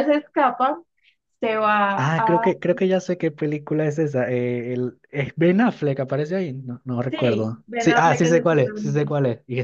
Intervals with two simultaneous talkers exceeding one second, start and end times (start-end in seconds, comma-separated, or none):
7.1-9.1